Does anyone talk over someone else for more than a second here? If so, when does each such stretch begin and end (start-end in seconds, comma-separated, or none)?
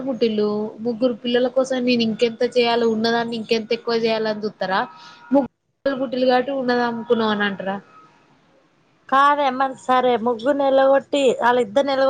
none